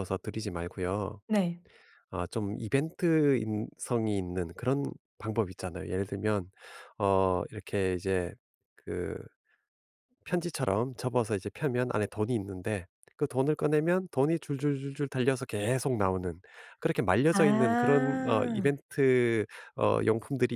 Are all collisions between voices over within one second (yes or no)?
no